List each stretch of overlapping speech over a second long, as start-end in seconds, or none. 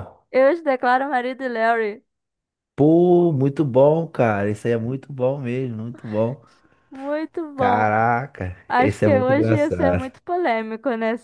8.7-10.1